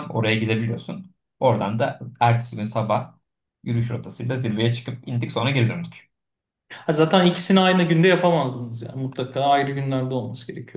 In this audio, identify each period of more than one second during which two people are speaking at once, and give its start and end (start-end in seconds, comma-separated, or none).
none